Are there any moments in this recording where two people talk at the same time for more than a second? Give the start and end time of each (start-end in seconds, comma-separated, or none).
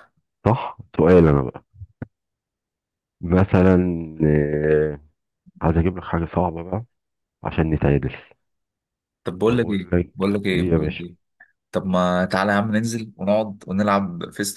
9.5-11.0